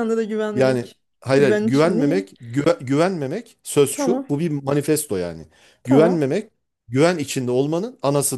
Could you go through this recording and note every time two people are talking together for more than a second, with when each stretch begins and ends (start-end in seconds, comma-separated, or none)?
0.5-2.3